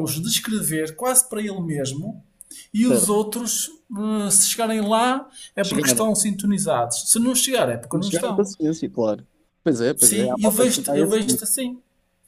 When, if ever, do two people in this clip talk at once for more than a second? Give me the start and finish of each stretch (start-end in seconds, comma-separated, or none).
10.0-11.4